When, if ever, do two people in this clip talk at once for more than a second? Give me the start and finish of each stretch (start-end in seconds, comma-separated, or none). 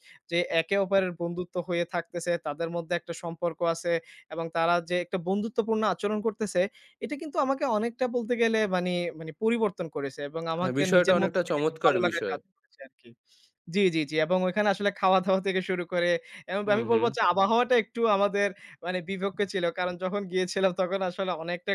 10.6-12.4